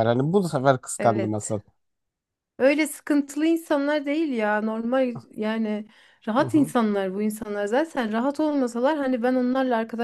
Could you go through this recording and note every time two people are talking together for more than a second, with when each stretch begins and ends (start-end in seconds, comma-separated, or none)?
none